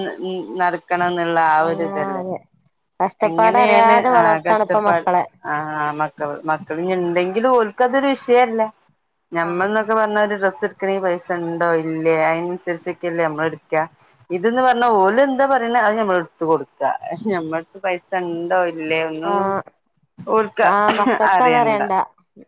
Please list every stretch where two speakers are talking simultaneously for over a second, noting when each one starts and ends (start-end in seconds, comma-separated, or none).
3.3-5.1